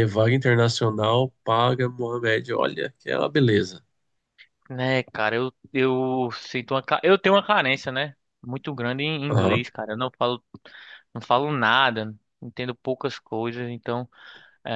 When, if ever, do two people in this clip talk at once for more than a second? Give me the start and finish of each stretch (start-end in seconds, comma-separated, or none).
none